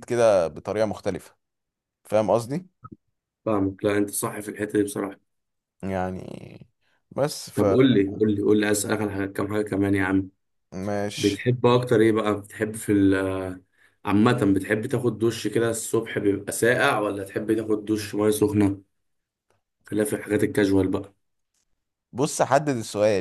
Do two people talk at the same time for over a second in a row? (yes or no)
no